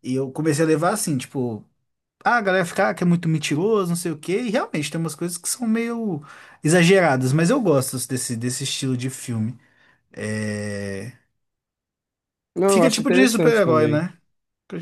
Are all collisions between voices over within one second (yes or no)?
no